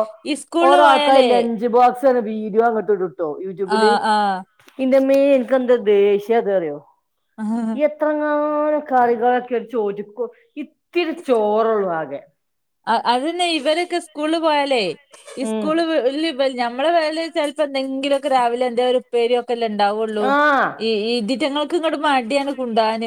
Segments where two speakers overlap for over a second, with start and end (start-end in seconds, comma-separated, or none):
none